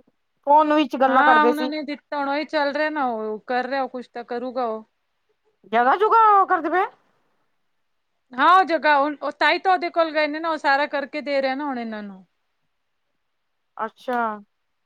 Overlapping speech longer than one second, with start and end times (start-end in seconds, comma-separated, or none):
none